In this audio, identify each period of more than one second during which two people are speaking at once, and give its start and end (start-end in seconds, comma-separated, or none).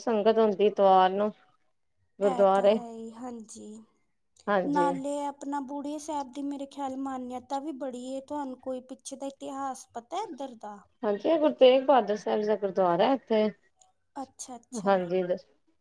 none